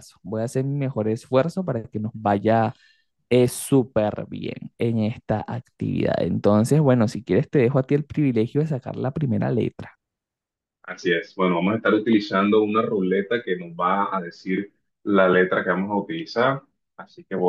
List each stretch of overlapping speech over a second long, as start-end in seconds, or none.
none